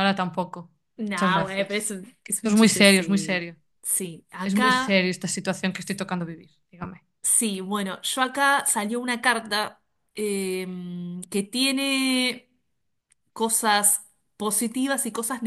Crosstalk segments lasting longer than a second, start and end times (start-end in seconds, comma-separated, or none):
1.1-3.5